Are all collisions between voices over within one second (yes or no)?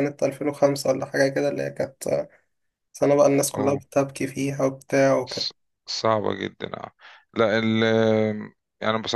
yes